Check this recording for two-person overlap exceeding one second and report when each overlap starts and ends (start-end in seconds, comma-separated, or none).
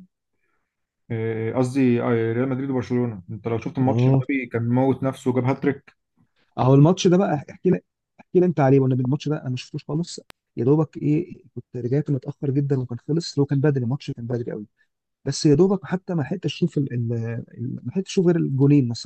none